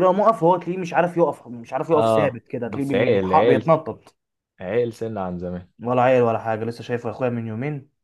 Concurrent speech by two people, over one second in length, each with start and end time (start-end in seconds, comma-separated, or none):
1.9-3.7